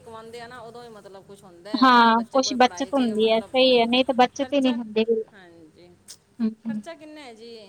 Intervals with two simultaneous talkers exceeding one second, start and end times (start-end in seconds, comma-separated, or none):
1.8-3.5